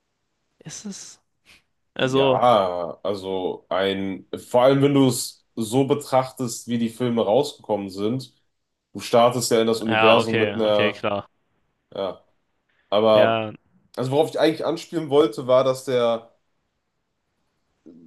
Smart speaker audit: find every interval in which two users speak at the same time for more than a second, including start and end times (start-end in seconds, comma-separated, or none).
9.9-11.1